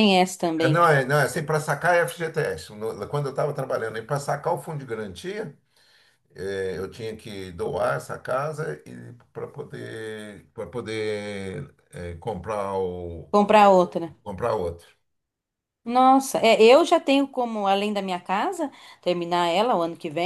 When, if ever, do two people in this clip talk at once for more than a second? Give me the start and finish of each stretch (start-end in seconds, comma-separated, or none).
none